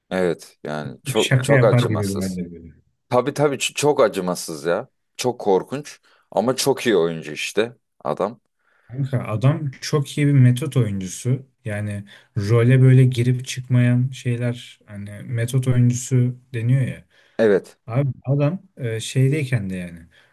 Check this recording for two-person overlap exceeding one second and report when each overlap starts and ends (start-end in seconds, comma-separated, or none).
1.1-2.4